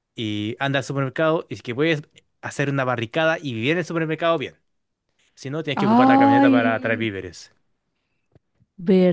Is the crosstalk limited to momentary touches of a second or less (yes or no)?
no